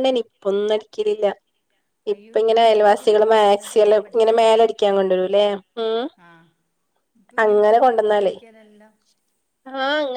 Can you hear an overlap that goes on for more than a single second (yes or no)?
yes